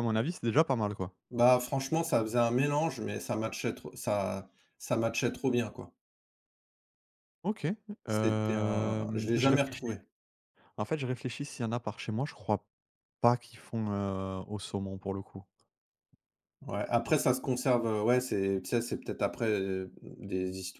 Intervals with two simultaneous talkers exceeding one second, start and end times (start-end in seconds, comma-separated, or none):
8.1-10.0